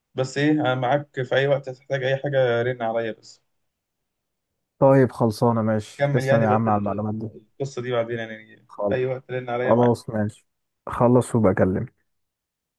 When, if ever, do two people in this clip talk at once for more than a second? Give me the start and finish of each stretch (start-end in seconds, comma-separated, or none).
6.0-7.3